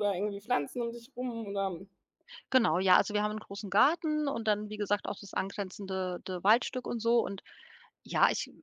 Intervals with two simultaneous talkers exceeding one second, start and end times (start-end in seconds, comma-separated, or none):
none